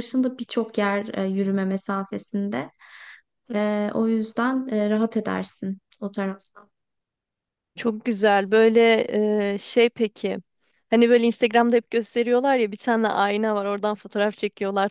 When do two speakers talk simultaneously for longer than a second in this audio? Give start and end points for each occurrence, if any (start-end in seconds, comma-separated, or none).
none